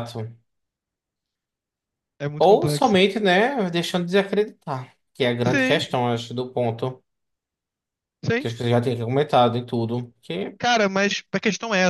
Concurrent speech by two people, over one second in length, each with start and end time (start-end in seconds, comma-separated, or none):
none